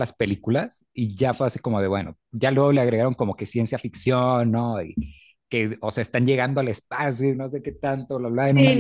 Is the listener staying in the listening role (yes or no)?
no